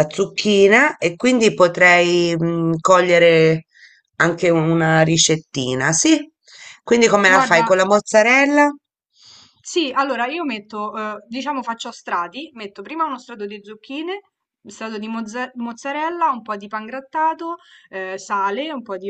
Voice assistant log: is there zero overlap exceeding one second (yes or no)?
yes